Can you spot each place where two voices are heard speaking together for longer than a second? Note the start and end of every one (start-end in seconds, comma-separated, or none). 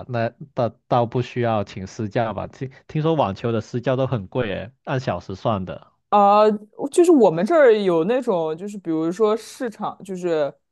none